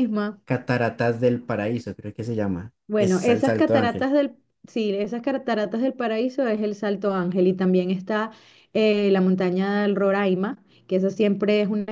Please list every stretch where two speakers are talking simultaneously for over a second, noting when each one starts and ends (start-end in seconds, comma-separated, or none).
2.9-4.1